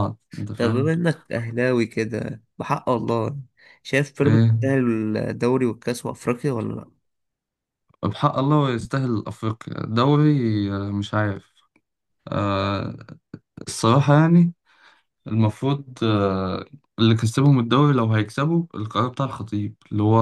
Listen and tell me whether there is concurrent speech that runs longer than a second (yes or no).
no